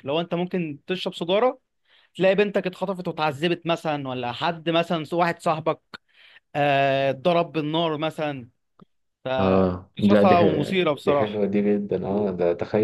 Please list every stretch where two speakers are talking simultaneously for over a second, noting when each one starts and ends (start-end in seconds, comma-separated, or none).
10.0-11.4